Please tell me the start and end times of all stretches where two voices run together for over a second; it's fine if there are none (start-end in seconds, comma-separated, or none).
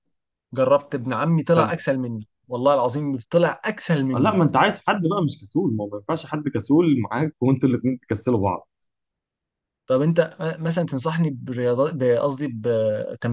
none